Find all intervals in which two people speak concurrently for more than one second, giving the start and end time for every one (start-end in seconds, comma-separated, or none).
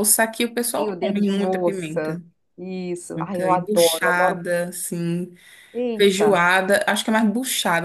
0.8-2.2, 3.1-4.4